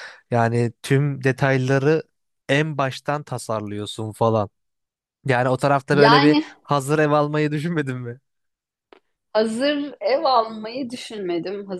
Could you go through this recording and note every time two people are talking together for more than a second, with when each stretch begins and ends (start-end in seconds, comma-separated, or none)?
none